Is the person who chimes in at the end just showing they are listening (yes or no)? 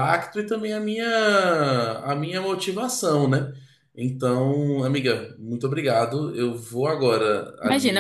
no